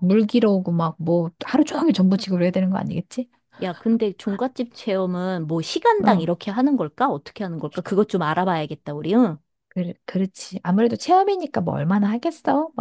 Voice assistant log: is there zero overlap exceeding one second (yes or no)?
yes